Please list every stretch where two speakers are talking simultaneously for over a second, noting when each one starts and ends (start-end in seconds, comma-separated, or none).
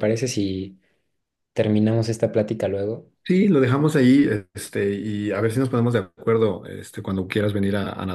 none